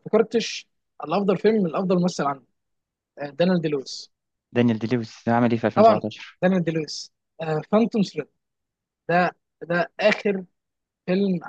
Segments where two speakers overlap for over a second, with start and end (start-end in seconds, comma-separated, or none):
none